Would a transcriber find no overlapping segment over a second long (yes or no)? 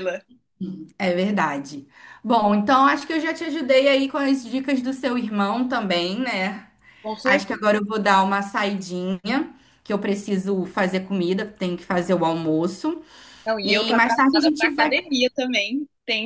no